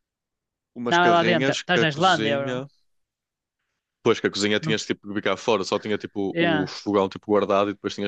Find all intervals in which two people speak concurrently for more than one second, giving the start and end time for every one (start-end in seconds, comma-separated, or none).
0.9-2.6